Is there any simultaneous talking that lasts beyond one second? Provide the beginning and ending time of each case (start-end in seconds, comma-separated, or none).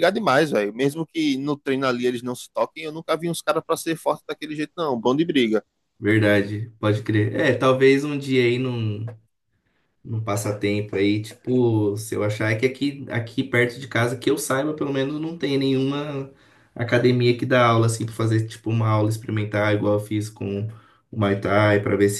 none